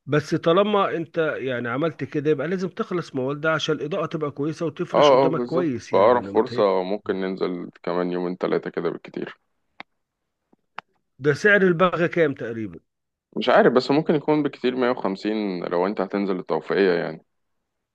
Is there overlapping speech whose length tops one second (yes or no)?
yes